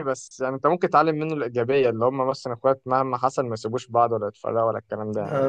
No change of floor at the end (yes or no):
no